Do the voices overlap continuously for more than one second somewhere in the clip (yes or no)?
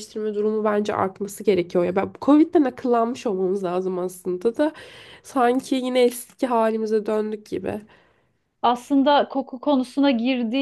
no